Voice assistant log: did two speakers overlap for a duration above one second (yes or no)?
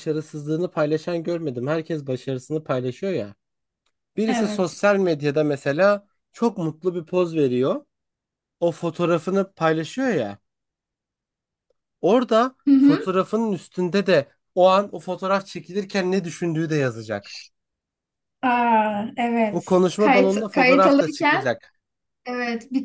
yes